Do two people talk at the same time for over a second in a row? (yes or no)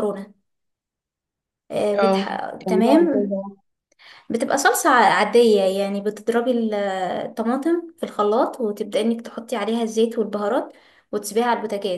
yes